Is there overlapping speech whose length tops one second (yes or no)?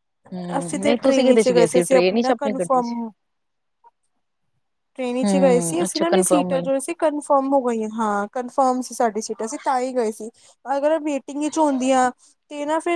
yes